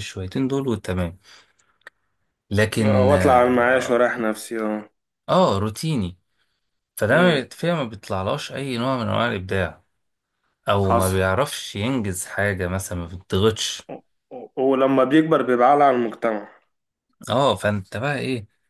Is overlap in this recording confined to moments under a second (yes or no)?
no